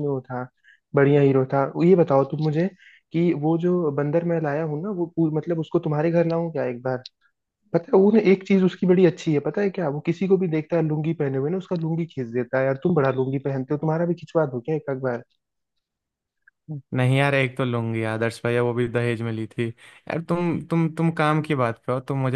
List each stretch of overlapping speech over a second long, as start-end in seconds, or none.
none